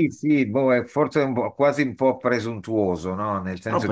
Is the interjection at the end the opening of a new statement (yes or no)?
no